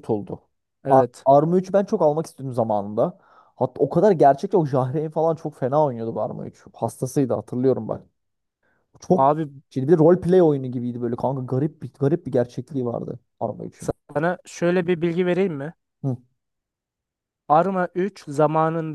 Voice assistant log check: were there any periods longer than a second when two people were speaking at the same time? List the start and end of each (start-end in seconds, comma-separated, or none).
none